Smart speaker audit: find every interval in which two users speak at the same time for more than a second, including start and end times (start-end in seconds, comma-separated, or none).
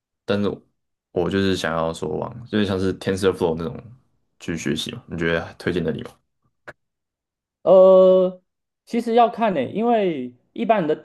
none